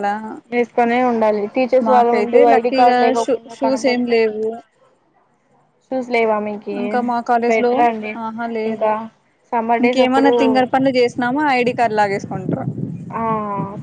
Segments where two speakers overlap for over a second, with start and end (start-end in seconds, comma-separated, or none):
1.9-4.1